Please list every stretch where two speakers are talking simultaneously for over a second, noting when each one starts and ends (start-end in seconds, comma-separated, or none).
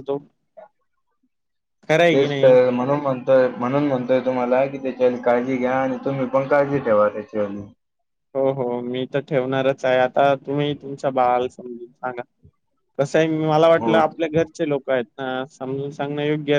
none